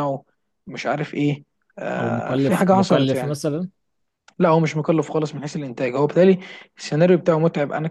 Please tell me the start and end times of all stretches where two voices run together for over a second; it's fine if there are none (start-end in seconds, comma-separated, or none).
2.0-3.4